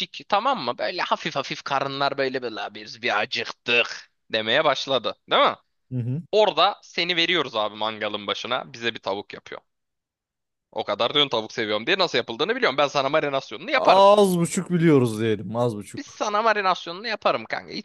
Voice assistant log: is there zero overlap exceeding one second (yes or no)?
yes